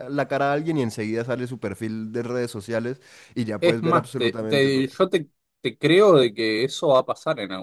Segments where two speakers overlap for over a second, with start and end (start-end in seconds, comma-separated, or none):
3.6-5.0